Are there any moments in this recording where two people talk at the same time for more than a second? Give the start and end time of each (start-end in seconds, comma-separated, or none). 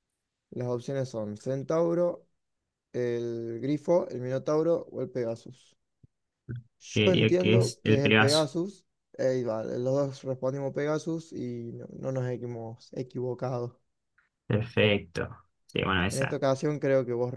6.9-8.5